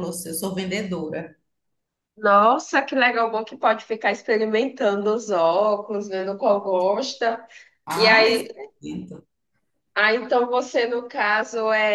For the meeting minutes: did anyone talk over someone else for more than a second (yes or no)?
no